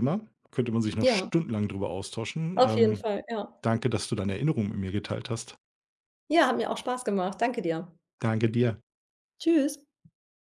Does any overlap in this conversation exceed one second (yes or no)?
no